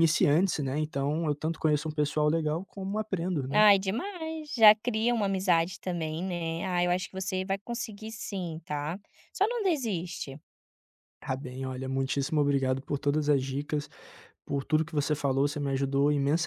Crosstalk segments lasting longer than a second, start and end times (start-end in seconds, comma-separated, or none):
none